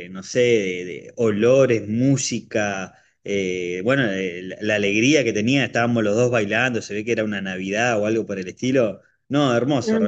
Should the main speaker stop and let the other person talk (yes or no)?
yes